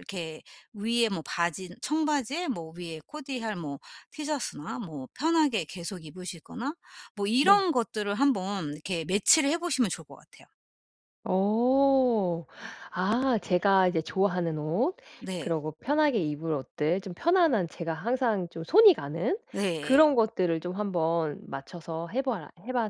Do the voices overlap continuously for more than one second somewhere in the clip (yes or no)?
no